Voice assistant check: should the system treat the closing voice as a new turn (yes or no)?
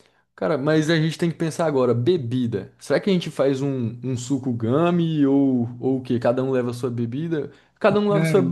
no